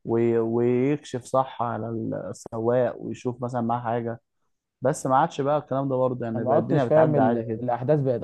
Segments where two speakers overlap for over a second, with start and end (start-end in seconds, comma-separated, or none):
6.3-7.6